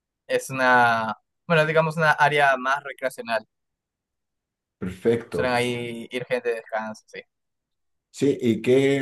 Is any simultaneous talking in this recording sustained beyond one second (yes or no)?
no